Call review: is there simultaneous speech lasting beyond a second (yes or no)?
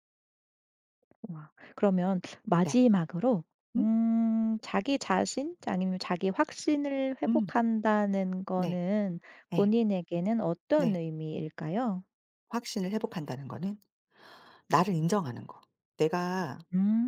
no